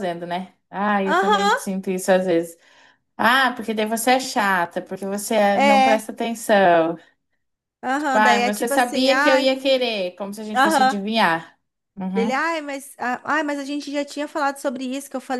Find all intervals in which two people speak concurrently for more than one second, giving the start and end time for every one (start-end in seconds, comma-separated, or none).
8.0-9.5